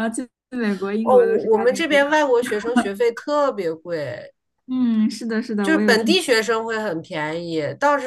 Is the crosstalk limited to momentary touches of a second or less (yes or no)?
no